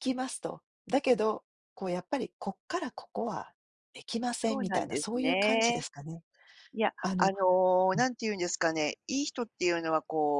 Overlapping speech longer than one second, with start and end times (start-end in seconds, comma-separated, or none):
4.5-5.8